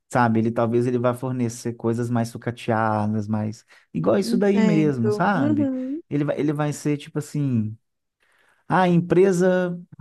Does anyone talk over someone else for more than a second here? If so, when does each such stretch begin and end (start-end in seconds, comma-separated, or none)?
4.2-5.7